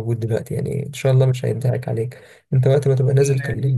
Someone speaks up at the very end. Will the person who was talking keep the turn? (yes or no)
no